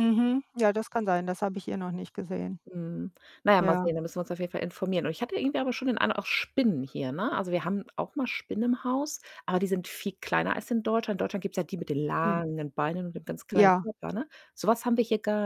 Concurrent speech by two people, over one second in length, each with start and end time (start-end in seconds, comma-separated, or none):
none